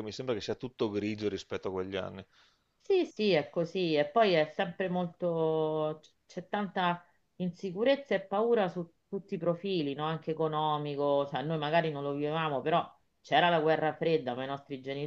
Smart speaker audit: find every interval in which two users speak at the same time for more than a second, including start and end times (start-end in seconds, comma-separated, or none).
none